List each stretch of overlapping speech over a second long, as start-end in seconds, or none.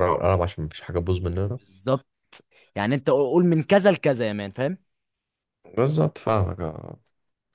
none